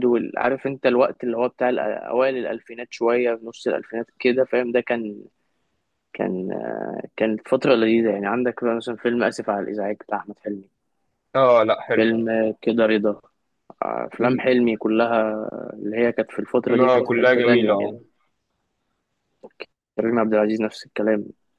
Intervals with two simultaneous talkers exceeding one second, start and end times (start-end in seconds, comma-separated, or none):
16.7-17.9